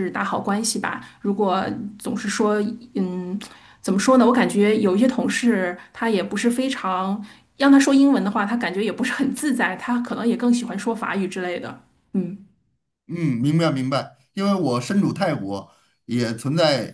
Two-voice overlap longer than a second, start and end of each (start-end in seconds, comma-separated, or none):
none